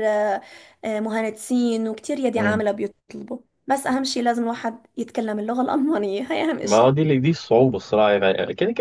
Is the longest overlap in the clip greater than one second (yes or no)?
no